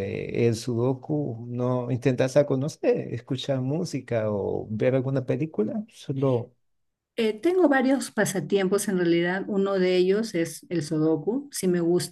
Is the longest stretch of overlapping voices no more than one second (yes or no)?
yes